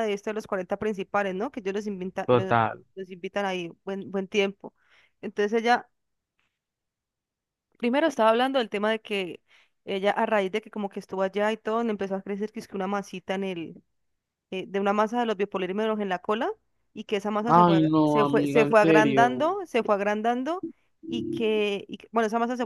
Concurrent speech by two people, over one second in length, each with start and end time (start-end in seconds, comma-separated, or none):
17.5-19.4